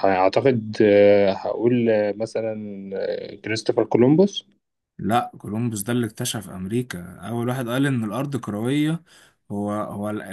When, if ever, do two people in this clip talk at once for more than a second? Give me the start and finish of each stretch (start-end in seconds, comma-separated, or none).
none